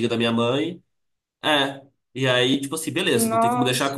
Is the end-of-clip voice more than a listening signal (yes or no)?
no